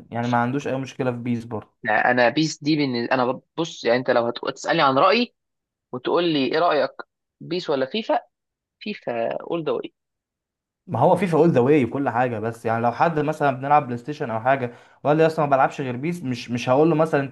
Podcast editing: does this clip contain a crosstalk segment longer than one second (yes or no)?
no